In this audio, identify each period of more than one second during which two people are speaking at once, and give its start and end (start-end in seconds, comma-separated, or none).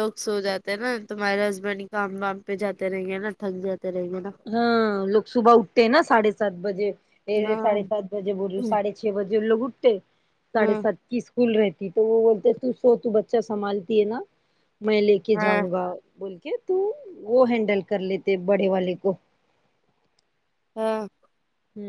none